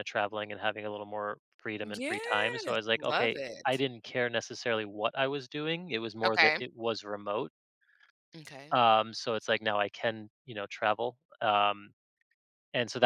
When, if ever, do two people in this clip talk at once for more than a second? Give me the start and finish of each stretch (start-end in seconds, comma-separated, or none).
1.8-3.8